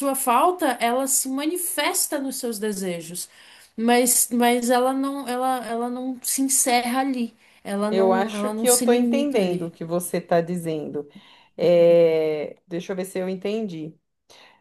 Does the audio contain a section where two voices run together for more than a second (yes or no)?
yes